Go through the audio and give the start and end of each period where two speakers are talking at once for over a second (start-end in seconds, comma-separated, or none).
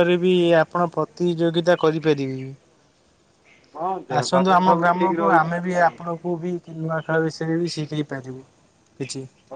4.2-6.0